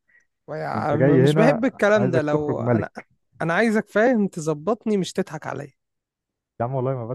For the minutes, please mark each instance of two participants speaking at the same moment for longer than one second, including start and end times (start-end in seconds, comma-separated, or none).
0.7-2.9